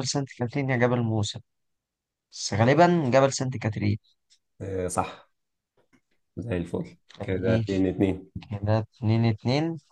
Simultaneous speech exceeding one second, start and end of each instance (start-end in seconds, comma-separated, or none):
none